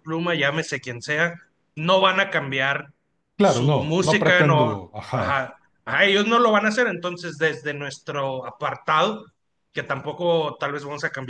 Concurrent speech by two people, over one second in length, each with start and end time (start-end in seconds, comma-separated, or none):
3.4-5.4